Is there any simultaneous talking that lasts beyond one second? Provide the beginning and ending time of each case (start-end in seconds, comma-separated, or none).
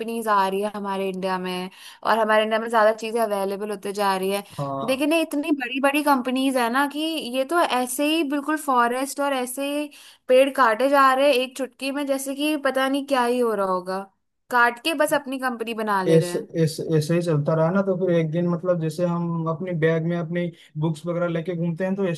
none